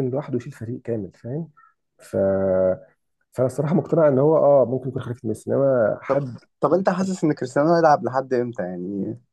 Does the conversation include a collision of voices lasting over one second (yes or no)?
no